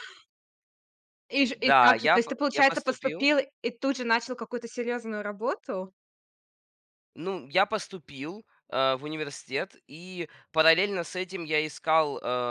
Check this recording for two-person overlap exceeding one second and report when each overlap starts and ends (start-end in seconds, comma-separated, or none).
1.5-3.3